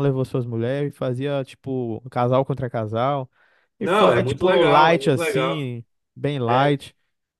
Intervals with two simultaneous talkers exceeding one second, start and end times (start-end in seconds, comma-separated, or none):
3.8-5.7